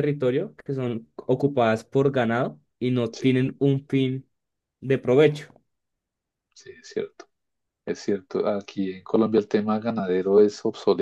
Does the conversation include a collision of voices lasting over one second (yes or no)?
no